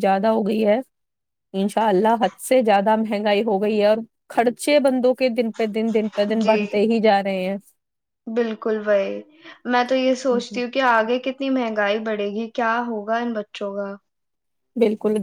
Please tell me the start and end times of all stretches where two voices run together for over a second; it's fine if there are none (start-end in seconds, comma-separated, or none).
none